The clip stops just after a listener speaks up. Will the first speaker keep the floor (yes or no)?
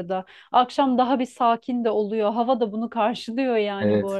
no